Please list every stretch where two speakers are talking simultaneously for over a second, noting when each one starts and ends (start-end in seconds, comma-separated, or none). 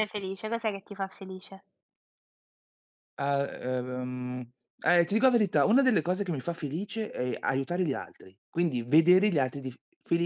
none